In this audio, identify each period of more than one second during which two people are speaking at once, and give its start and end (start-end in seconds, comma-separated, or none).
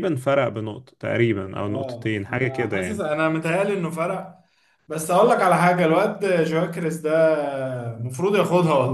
1.7-3.1